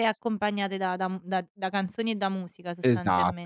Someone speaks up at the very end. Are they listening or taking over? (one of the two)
taking over